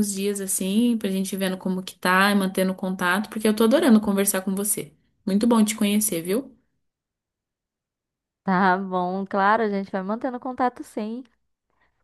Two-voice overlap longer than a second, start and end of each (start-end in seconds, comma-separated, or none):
none